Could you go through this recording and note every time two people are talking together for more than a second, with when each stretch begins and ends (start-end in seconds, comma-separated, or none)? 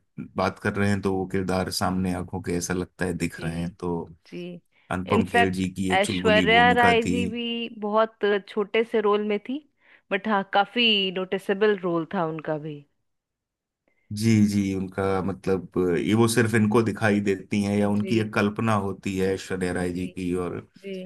5.2-7.2